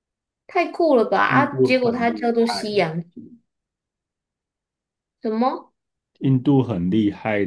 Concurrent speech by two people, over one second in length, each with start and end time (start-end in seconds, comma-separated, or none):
1.2-2.8